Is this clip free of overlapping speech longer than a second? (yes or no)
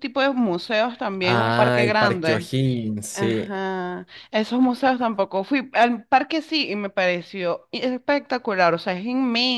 no